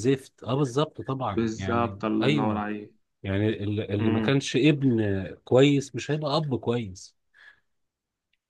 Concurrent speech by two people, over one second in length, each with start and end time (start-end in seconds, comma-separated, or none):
1.3-2.6